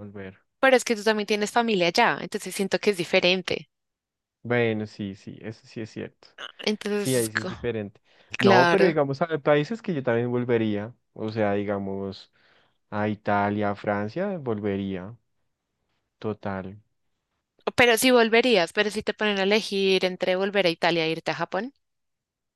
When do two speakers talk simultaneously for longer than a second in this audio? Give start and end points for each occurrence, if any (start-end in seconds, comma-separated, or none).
none